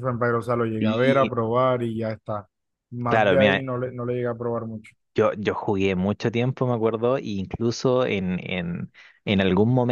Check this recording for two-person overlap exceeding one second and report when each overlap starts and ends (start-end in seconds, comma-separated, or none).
none